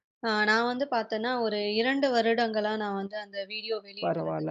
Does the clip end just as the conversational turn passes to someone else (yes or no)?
yes